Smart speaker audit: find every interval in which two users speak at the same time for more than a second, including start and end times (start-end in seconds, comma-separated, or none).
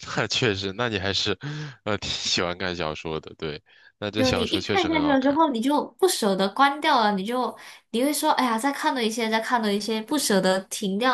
4.2-5.4